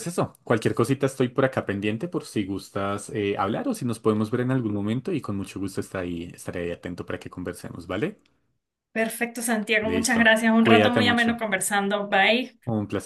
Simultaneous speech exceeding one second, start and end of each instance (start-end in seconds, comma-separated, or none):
9.8-11.4